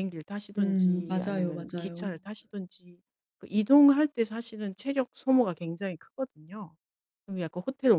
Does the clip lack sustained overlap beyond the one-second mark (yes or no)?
no